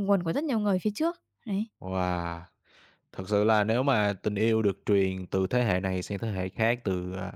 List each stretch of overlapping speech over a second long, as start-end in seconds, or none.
none